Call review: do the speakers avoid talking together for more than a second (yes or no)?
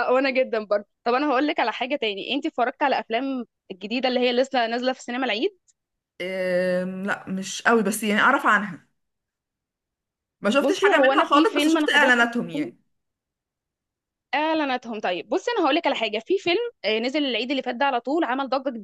no